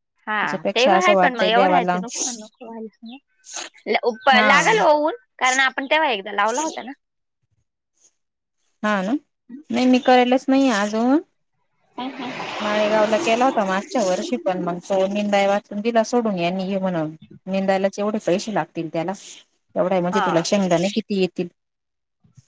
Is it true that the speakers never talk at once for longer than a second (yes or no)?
no